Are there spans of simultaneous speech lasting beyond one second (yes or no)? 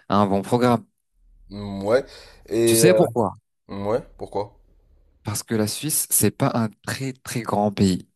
no